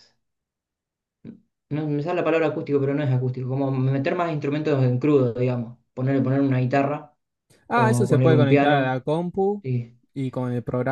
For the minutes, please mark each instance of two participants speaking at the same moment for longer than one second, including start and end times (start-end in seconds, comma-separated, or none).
7.7-9.0